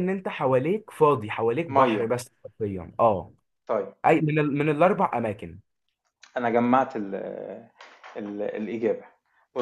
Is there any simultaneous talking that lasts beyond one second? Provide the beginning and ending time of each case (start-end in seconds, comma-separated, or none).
none